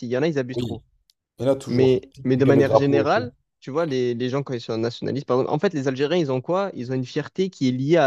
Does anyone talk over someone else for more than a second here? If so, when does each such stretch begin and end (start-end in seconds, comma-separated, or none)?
1.7-3.3